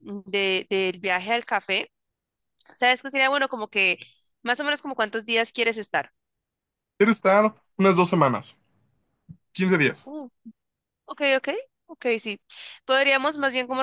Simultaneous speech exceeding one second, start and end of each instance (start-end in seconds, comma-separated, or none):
none